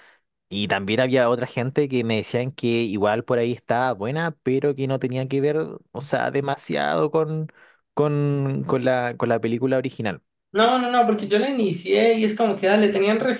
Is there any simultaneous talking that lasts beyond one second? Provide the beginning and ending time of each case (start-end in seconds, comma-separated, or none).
none